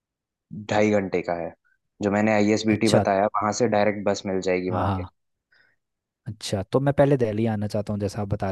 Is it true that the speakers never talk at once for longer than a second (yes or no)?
yes